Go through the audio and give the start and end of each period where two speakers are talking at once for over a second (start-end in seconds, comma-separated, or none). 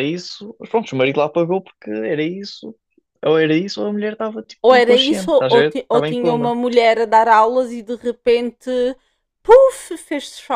4.6-6.5